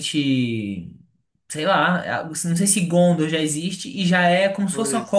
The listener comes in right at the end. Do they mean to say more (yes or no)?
no